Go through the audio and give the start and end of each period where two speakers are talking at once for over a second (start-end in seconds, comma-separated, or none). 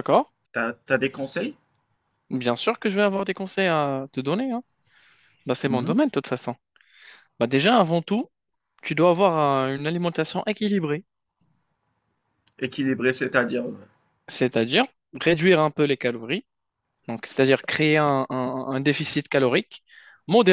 none